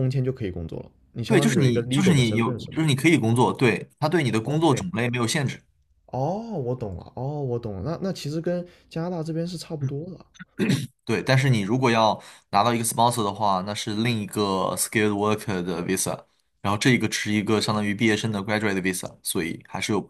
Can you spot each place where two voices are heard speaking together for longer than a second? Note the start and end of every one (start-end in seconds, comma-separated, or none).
1.3-2.8